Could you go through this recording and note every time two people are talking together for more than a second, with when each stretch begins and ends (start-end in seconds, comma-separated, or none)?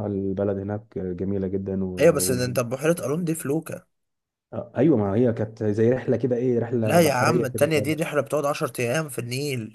6.8-8.1